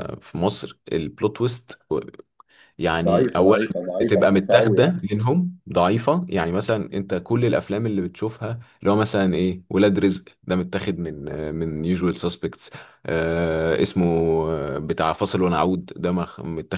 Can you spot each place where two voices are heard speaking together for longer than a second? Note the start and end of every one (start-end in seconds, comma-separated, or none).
3.0-5.0